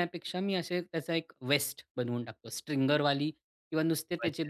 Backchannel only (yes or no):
yes